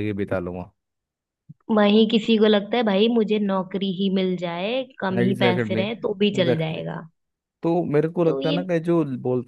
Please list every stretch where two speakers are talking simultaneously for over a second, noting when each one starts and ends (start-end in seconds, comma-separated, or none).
5.2-6.8